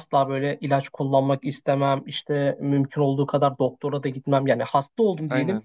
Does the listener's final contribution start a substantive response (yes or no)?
no